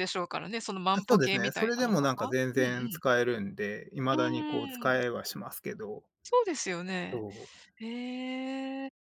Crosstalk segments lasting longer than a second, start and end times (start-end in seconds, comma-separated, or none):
1.1-3.0